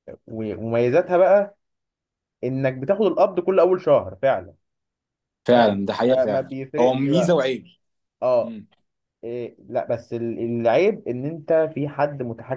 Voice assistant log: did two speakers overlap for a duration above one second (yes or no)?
yes